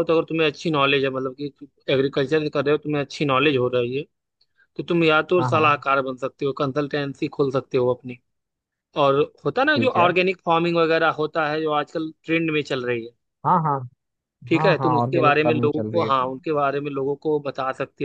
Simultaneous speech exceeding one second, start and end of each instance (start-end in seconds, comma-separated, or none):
14.5-16.3